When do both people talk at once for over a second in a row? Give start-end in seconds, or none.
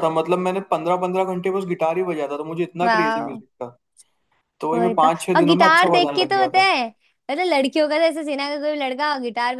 4.7-6.7